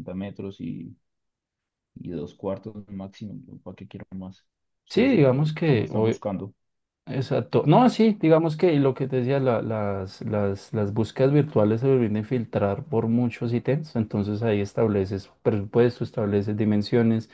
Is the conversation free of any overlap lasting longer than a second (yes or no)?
no